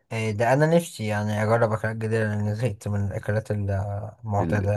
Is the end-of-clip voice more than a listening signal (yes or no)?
yes